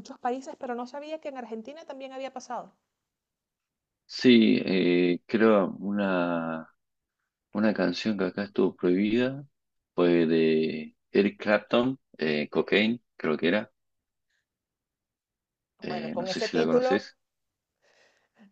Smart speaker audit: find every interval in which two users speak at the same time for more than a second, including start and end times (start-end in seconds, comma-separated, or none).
15.8-17.1